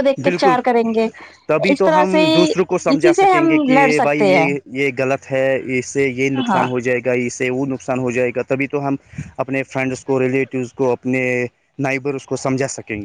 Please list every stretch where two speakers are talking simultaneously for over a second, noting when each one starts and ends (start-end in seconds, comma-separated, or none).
2.9-4.5